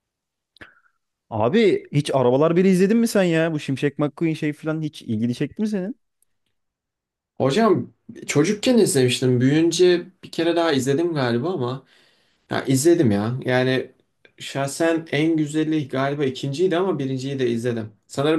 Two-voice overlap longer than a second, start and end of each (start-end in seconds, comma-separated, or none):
none